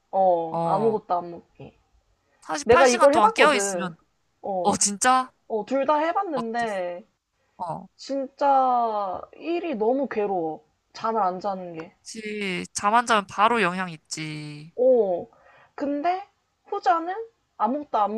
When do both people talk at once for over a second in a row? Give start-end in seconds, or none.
2.6-3.9